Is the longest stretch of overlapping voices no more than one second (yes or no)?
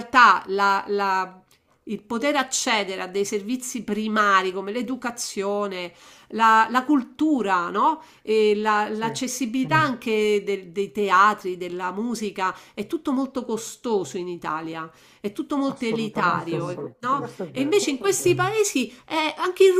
no